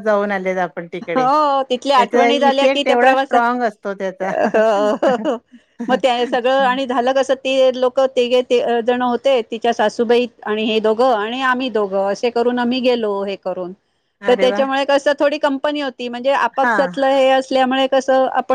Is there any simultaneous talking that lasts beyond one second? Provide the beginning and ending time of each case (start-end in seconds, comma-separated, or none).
1.9-3.3